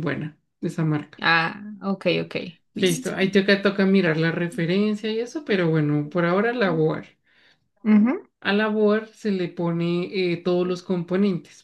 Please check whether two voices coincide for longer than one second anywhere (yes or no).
no